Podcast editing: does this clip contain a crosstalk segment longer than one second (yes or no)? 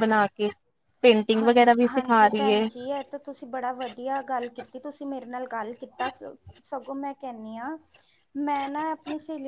yes